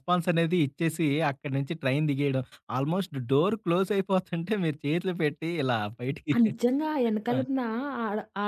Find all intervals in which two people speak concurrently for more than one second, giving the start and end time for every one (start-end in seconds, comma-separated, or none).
none